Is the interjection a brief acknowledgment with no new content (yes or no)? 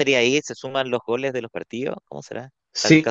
no